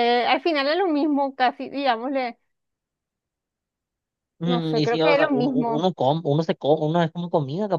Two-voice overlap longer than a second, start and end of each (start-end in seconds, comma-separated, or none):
4.4-5.9